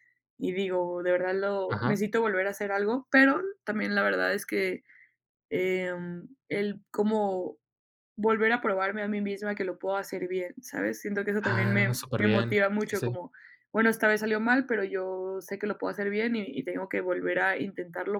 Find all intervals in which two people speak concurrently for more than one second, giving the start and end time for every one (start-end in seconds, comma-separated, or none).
11.4-13.2